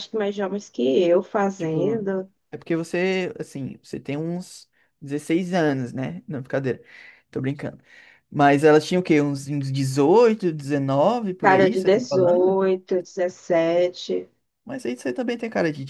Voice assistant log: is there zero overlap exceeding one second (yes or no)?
no